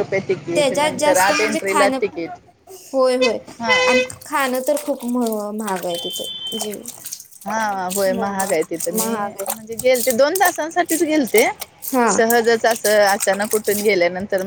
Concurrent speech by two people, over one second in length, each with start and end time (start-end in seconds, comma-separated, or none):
0.5-2.2